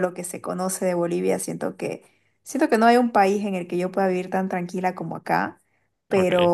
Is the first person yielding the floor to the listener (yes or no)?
no